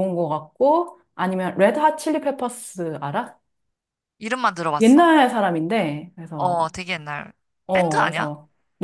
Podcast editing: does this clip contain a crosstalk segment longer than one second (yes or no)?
no